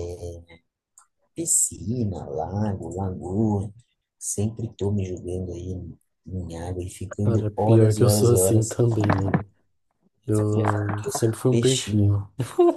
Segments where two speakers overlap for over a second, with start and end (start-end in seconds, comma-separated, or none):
7.2-8.8, 10.5-12.2